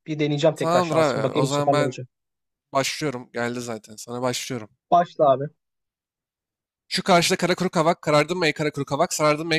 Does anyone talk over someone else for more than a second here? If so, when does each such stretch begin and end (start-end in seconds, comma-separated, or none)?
0.6-2.0